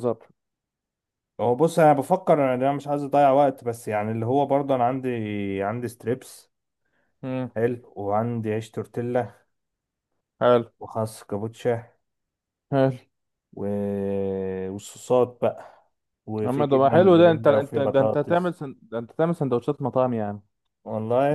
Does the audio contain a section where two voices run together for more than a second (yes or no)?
yes